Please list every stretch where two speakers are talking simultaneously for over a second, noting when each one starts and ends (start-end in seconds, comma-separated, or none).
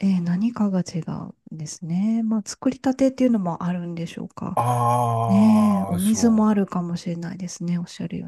5.3-6.5